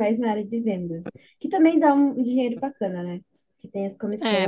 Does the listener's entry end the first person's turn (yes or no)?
no